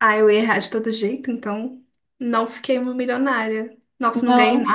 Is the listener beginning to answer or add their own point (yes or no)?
yes